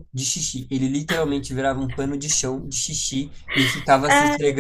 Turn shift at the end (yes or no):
no